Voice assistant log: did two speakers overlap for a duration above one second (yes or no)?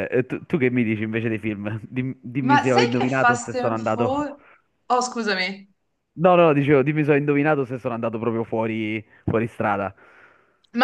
yes